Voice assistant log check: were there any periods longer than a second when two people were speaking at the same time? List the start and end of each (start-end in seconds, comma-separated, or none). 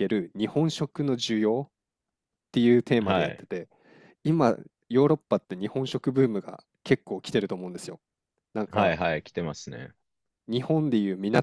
none